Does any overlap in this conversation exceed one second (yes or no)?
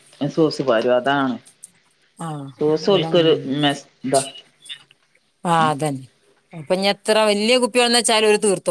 no